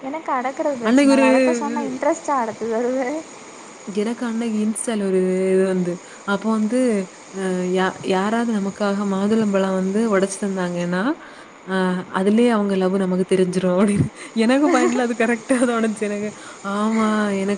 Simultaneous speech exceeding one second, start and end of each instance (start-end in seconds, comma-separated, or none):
none